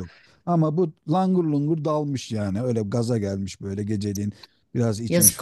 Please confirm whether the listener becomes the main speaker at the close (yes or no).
yes